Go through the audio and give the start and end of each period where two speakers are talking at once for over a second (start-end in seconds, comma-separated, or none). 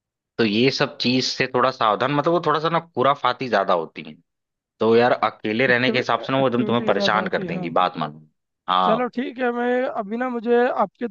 5.7-7.8